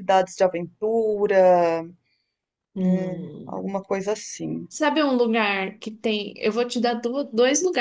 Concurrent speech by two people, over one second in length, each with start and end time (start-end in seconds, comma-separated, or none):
none